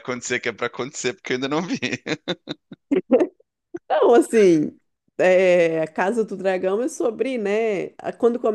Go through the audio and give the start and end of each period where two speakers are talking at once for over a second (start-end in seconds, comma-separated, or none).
none